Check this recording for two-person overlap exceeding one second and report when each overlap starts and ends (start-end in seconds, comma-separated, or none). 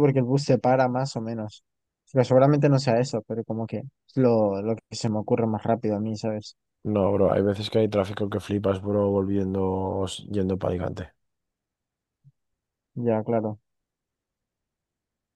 none